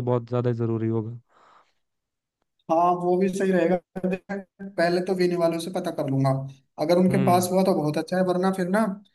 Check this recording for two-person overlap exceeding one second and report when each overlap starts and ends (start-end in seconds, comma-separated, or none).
none